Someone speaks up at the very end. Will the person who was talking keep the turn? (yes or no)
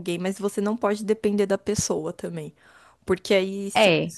yes